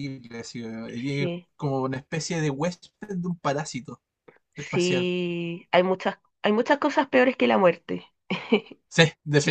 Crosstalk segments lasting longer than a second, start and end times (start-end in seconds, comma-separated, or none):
none